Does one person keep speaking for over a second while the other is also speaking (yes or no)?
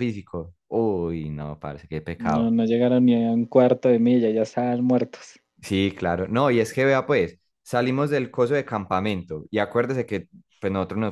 no